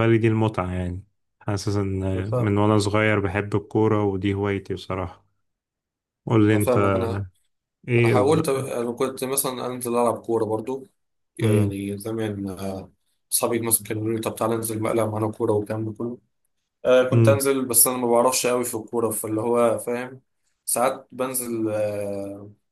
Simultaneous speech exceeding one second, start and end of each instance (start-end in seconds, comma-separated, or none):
none